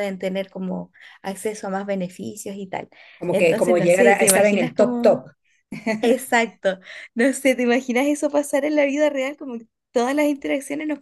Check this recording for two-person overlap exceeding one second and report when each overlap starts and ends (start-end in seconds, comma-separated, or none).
3.3-5.2